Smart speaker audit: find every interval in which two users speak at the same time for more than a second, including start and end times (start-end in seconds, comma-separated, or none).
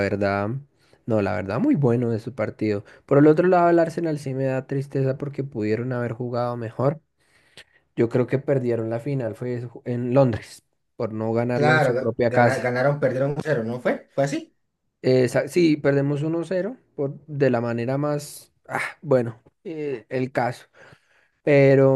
11.5-12.7